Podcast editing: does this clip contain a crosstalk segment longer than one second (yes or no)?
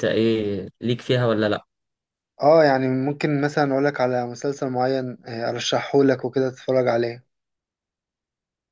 no